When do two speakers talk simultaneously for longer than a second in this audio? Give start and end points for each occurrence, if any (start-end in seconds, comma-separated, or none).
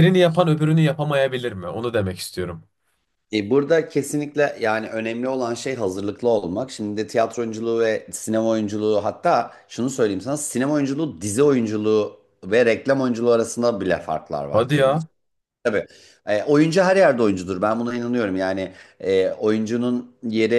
none